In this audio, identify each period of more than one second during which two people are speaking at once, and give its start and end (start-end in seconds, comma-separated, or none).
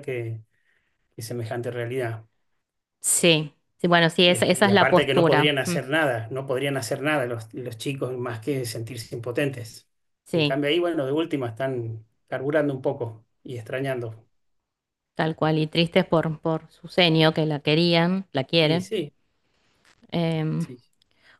4.3-5.8